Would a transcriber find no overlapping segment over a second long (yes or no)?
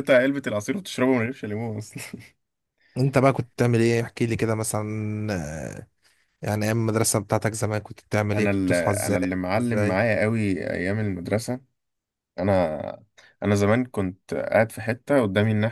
no